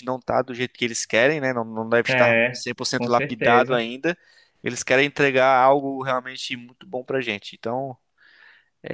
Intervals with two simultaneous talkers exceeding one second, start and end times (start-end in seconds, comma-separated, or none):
2.1-3.8